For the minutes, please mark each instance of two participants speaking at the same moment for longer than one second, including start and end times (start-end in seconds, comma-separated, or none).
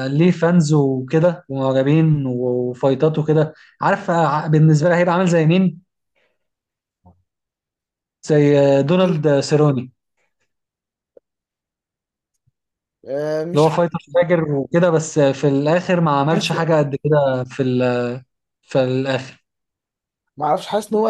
none